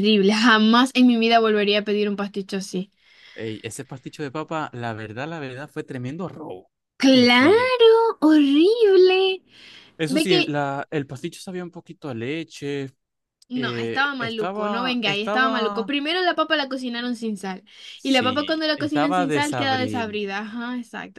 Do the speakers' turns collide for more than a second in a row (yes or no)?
yes